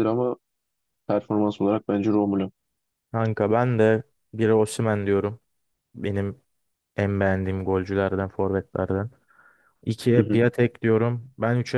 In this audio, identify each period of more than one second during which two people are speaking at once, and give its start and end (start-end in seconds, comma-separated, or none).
none